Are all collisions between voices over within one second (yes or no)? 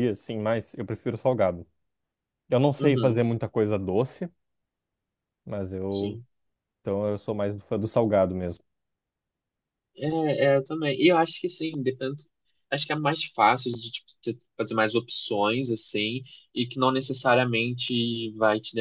yes